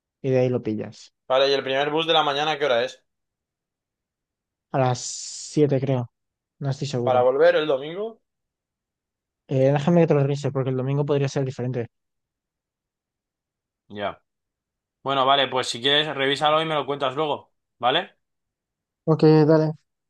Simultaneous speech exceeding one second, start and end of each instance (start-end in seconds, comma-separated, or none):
none